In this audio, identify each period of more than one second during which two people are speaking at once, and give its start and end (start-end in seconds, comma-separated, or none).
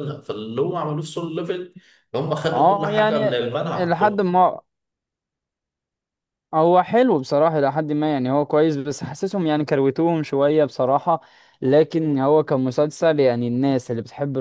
2.5-4.2